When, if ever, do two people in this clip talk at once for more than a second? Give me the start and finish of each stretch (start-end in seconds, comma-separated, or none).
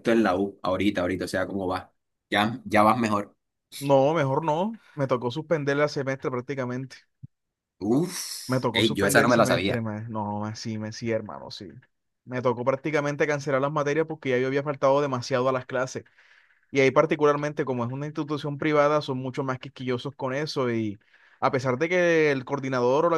8.5-9.8